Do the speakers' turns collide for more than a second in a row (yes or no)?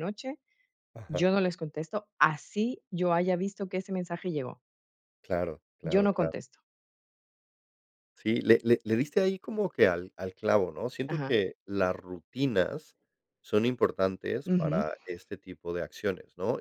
no